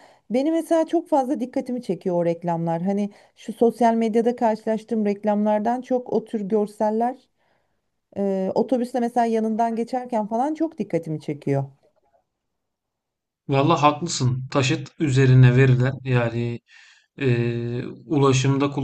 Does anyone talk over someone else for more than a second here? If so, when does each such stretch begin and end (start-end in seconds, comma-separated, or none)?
none